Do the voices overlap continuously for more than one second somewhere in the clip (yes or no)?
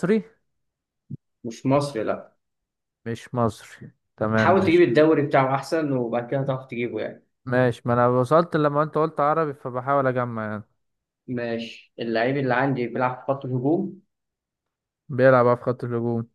no